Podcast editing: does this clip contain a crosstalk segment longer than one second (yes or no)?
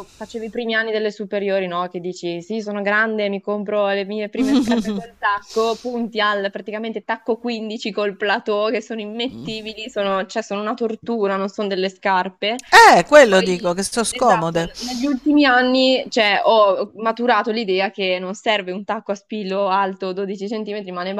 yes